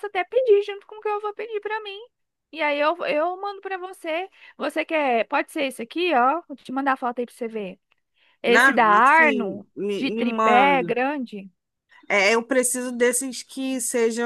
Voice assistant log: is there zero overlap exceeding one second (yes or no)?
no